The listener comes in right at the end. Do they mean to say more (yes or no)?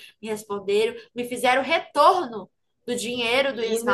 no